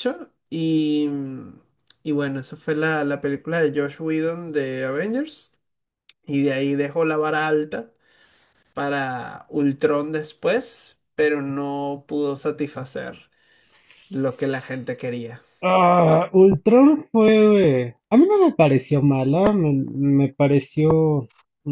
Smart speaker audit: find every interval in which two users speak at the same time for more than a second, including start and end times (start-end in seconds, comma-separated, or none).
none